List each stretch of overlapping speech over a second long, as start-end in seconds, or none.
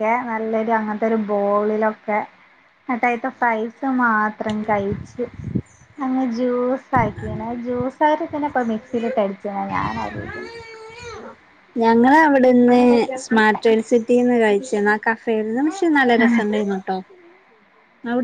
none